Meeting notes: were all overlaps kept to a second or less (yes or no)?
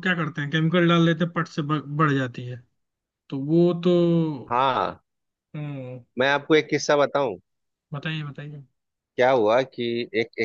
yes